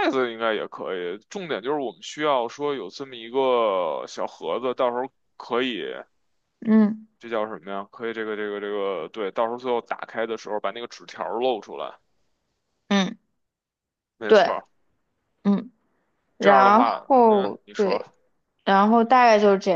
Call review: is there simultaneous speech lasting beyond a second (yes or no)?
yes